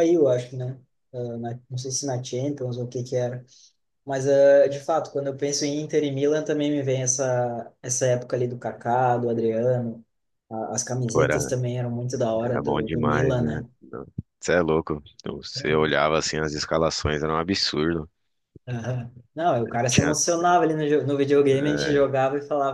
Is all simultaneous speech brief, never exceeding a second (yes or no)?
no